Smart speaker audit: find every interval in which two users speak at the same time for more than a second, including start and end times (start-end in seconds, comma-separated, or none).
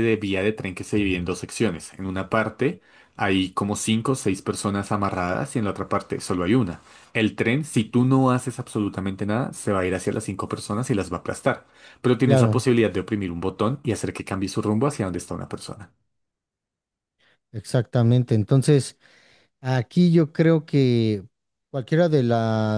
none